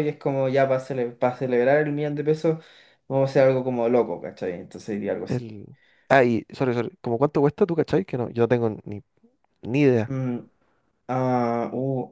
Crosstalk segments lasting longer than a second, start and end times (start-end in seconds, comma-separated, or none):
none